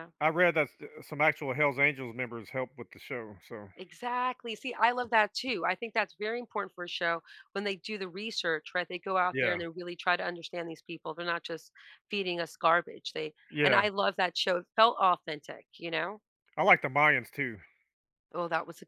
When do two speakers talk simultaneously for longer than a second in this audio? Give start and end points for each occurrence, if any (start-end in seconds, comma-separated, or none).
none